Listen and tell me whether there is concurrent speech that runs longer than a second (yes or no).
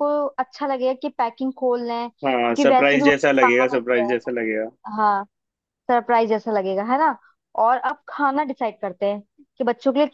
yes